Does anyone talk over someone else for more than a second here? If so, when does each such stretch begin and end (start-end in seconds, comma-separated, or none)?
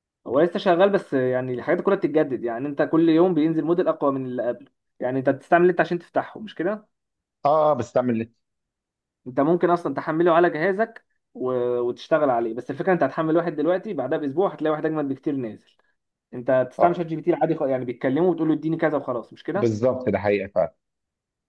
none